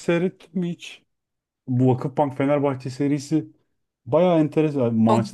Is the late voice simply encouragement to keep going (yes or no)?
yes